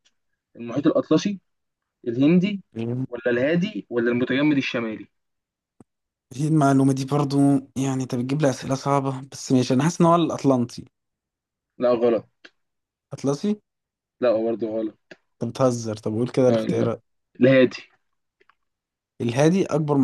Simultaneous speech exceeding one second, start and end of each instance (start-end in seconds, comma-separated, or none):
none